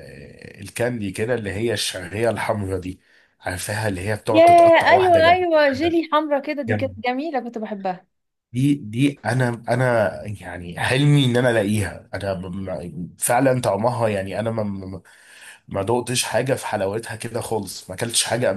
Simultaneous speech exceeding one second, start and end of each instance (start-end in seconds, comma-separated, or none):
4.3-6.0